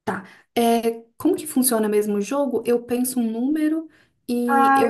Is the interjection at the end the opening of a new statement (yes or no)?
yes